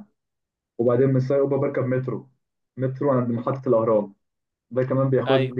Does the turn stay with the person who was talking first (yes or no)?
yes